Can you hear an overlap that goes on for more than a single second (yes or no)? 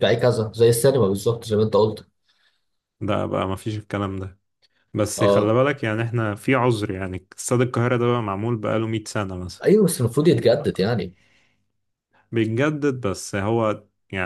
no